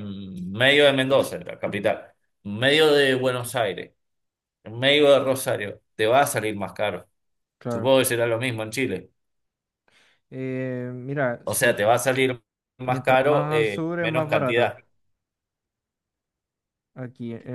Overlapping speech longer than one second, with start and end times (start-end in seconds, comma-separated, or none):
12.8-14.7